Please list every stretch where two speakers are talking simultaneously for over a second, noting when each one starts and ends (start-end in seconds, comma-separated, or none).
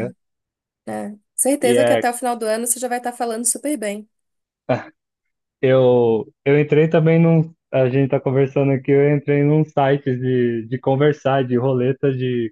none